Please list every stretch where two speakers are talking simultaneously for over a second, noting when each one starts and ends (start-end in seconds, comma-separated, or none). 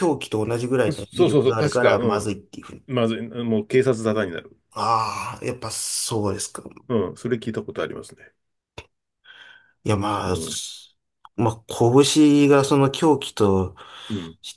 0.9-2.4